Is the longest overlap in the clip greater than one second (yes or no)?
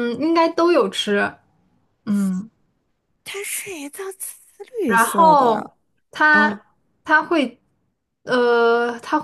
no